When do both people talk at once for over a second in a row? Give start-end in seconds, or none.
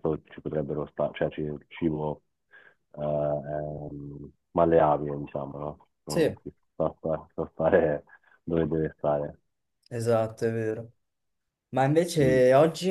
none